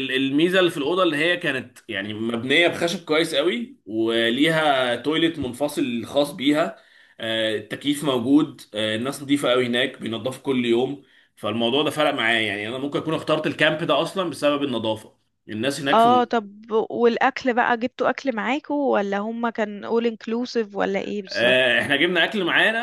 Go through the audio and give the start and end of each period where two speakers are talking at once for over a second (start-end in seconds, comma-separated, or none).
none